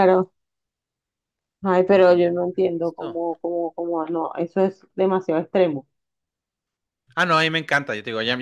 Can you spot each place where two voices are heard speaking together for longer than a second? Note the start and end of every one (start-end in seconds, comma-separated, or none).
1.9-3.2